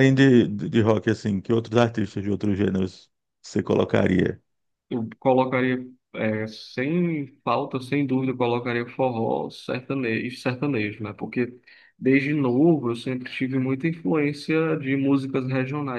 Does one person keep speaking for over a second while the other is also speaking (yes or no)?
no